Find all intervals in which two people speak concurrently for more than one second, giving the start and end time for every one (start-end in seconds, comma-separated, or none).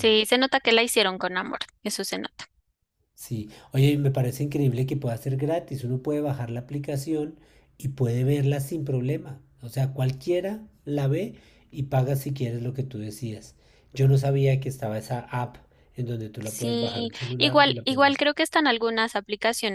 16.4-18.1